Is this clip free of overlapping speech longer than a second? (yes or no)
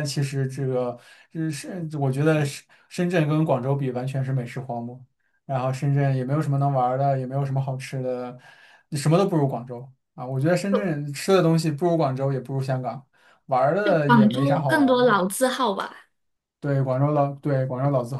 no